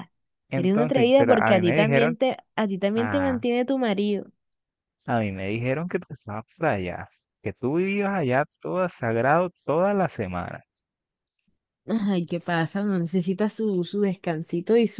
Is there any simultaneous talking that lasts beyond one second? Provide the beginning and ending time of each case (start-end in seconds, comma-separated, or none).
0.5-2.2